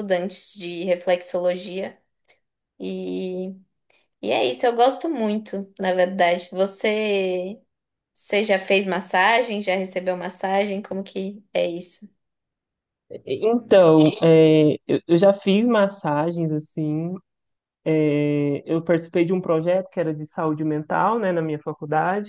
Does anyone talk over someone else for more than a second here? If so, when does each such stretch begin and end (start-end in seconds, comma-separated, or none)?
none